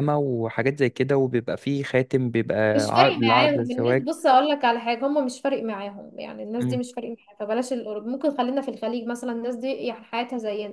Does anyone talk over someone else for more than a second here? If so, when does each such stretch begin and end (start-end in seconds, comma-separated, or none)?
2.8-4.1